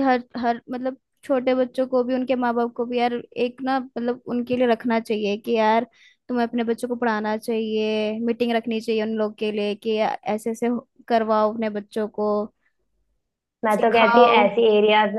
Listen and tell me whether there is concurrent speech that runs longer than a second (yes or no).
no